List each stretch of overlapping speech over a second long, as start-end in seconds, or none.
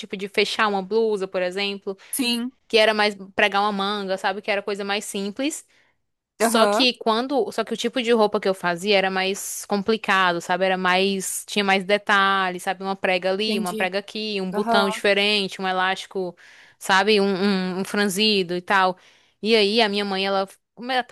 none